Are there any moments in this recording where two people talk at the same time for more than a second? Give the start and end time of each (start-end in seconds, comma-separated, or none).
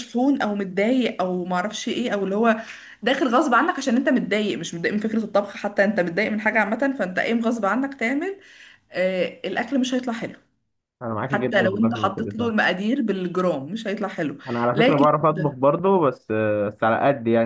11.3-12.5